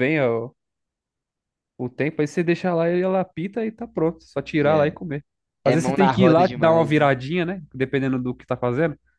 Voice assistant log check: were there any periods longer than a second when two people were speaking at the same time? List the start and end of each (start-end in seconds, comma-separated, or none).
5.7-7.1